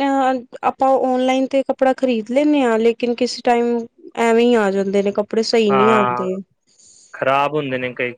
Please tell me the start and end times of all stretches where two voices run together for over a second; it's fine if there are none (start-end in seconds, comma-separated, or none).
none